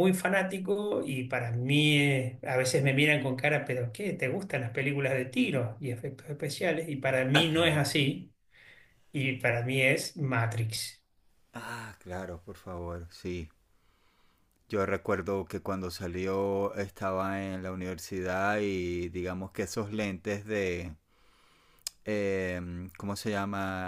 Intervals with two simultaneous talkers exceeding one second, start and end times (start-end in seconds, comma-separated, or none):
none